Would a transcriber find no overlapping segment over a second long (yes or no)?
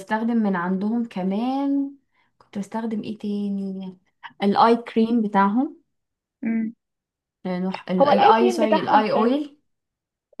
no